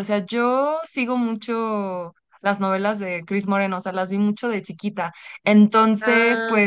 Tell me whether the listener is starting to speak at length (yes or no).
no